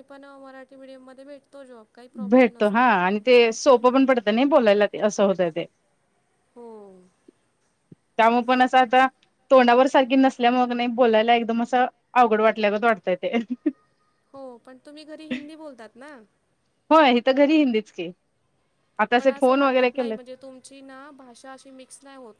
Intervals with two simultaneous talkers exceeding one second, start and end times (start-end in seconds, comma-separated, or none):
none